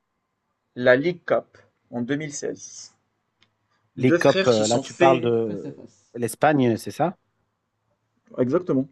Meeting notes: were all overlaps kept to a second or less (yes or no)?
no